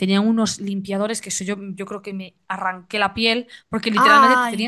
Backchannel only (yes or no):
yes